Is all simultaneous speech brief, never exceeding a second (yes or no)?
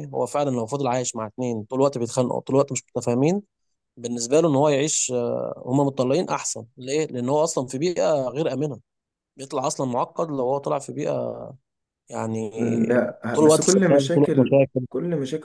no